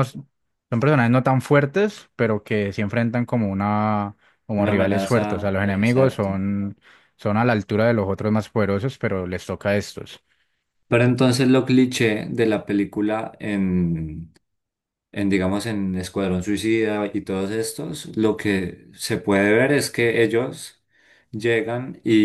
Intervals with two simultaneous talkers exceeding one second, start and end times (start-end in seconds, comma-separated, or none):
4.6-6.3